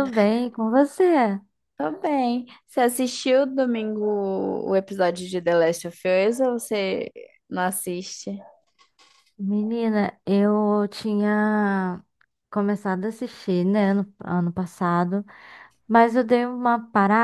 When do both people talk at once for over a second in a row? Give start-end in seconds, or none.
none